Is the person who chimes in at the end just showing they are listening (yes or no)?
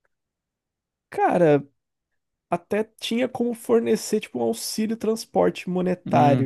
no